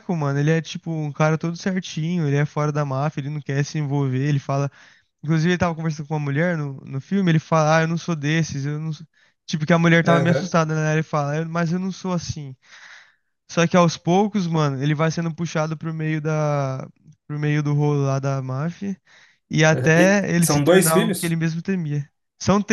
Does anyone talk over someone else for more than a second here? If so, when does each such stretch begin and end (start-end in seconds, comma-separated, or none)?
19.7-21.4